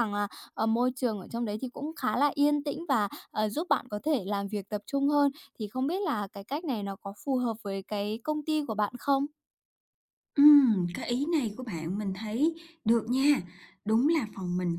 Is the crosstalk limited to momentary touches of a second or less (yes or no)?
yes